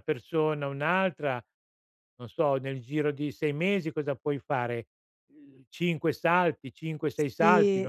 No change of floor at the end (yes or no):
no